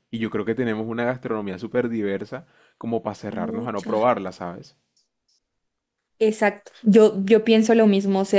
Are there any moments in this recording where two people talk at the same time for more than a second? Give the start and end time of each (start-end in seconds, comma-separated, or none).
none